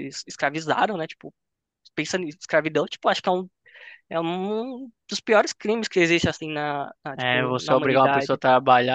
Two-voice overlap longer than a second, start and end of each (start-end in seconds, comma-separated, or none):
7.2-8.4